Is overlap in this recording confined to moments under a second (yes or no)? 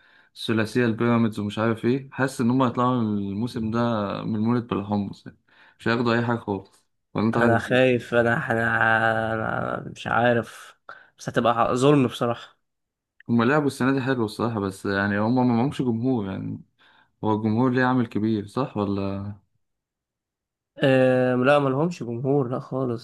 yes